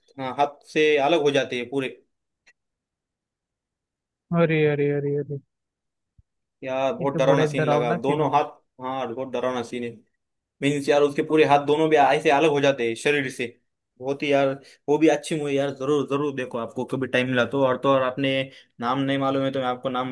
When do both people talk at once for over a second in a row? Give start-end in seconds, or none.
7.0-8.4